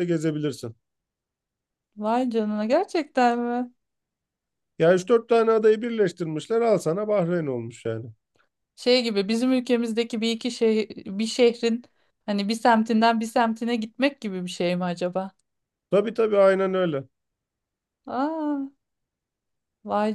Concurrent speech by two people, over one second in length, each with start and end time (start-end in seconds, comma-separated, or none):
none